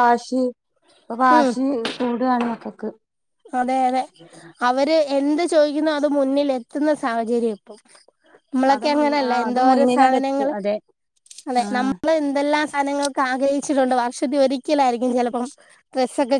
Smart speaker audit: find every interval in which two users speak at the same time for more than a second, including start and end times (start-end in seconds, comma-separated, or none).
8.8-10.5